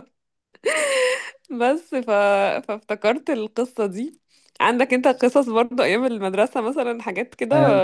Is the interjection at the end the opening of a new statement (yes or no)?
yes